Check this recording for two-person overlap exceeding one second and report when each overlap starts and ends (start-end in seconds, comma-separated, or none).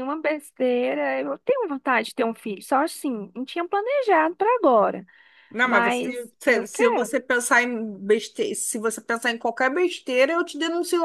5.6-7.2